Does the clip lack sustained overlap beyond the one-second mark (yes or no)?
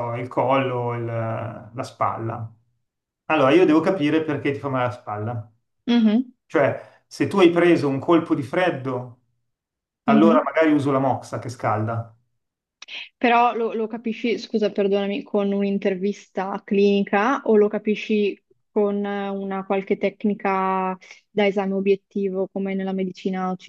yes